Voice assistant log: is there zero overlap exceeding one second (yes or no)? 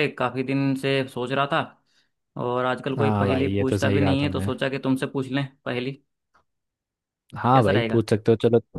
no